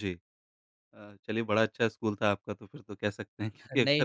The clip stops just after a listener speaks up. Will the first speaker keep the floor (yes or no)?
yes